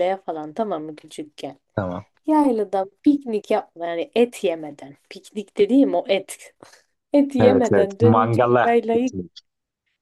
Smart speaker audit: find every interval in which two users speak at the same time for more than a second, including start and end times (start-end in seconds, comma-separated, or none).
7.4-9.2